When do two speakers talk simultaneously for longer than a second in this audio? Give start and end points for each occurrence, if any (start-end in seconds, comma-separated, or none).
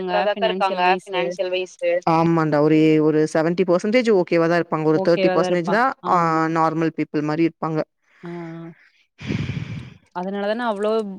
none